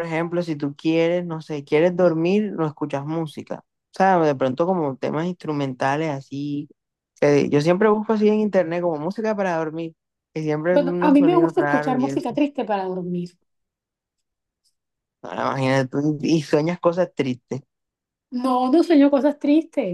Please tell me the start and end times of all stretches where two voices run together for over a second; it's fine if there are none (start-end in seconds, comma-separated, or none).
10.7-12.4